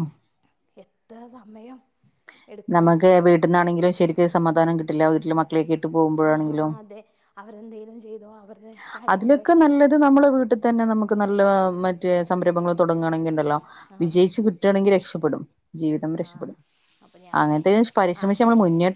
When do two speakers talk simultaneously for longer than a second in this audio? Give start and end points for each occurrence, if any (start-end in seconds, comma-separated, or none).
none